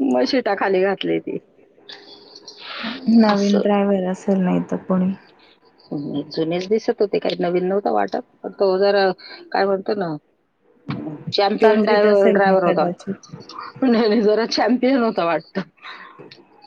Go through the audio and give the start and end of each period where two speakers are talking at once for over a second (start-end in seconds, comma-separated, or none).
11.6-12.9